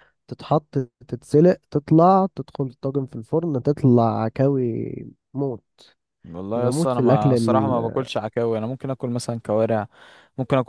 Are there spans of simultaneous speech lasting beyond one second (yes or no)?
yes